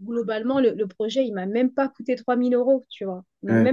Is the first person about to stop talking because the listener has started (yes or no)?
no